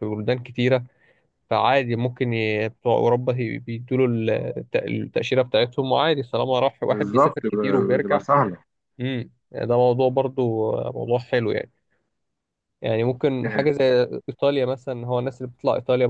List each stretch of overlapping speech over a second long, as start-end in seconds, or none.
6.9-8.2